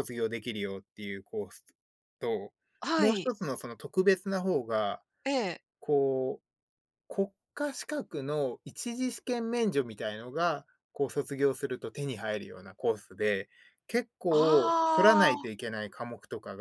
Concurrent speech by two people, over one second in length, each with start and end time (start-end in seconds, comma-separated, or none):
14.3-15.7